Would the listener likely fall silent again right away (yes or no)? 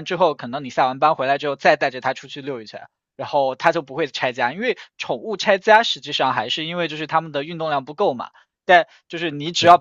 yes